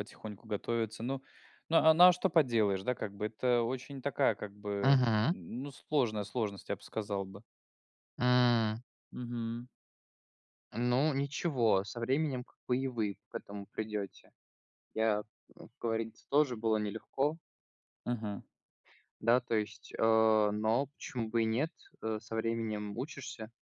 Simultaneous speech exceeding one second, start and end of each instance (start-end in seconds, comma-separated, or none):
none